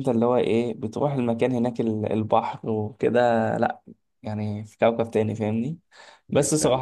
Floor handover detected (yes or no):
no